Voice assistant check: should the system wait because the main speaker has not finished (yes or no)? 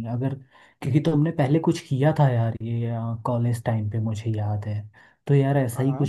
yes